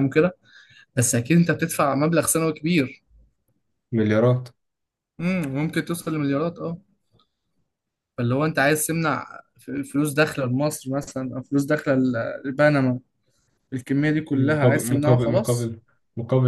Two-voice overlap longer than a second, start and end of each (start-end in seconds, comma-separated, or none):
14.3-15.7